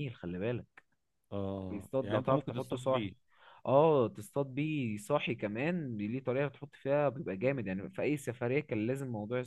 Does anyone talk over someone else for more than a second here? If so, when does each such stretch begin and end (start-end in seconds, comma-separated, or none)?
1.7-3.1